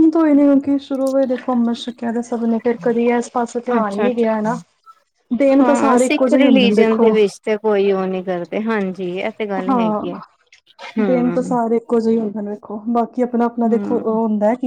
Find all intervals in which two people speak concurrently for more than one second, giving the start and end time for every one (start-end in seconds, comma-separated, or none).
5.6-7.1